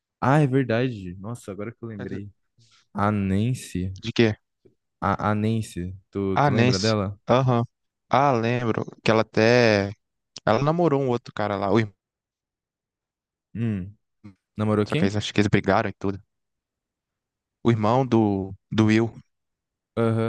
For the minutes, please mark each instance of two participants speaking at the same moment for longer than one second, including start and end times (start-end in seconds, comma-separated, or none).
none